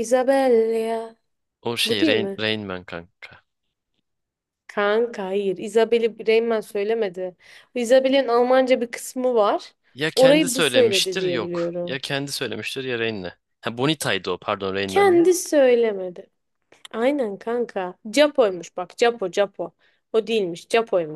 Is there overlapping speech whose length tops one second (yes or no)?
yes